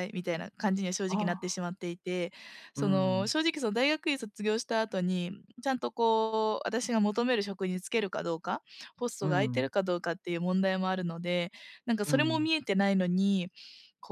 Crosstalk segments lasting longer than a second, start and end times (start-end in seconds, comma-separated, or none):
none